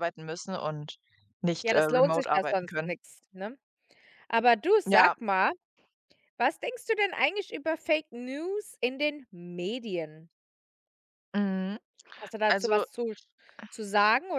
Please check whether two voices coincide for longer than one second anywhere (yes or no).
yes